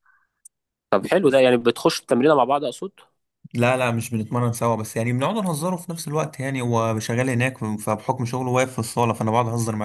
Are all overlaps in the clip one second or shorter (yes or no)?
yes